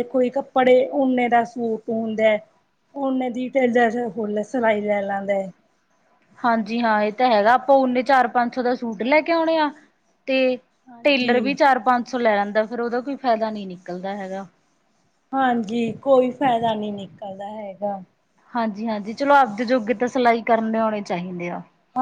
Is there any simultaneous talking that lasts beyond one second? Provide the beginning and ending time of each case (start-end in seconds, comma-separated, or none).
none